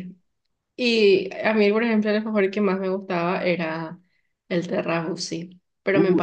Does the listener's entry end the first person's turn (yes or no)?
yes